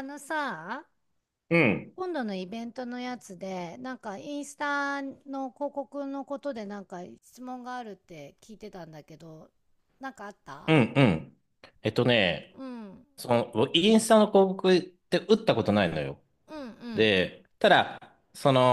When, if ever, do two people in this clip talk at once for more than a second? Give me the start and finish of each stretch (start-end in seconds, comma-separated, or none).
none